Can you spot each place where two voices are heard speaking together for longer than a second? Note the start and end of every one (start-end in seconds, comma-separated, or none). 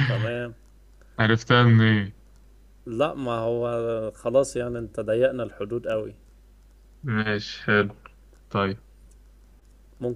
none